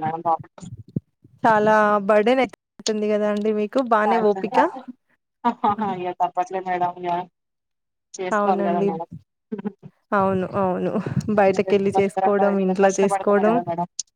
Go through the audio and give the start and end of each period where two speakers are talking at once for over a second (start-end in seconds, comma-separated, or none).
11.7-13.5